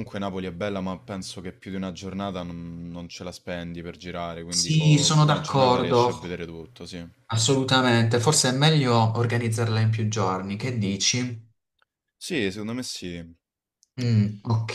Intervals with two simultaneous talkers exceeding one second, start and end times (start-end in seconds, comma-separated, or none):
4.5-6.4